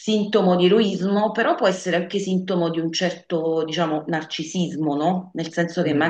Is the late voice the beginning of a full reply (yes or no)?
no